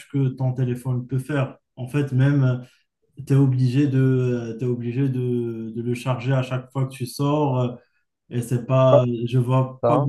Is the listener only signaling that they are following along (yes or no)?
yes